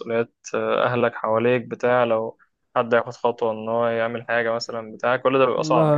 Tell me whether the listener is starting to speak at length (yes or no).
yes